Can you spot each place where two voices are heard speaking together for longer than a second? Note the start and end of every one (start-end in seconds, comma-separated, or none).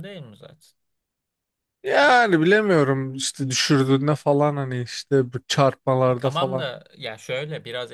none